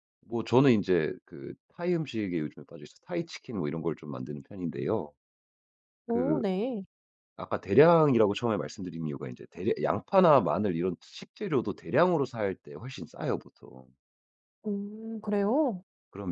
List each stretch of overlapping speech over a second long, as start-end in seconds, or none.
none